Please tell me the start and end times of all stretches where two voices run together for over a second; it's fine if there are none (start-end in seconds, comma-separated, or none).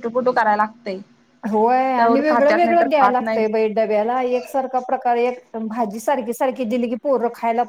2.0-3.4